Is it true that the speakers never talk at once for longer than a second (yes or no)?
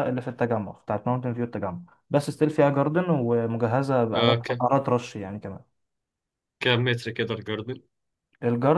yes